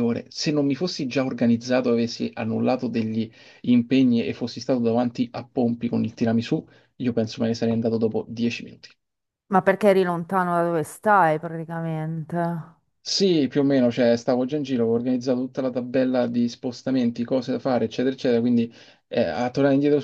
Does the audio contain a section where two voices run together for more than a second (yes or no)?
no